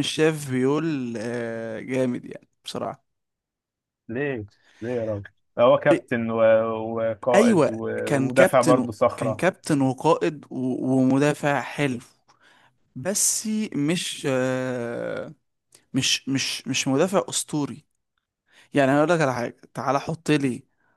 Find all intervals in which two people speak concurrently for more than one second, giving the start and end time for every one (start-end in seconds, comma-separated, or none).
7.3-9.4